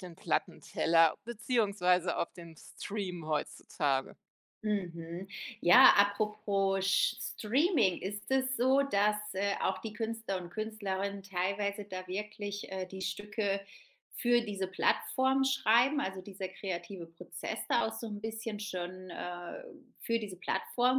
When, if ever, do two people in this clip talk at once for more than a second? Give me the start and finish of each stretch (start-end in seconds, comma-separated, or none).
none